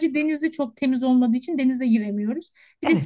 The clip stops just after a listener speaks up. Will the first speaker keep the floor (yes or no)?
yes